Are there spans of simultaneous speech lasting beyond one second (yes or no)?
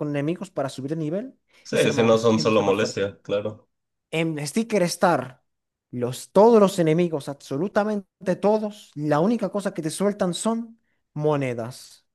yes